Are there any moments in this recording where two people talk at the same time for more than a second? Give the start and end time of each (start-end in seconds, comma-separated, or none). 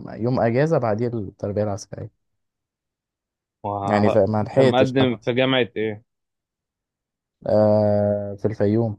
3.8-5.3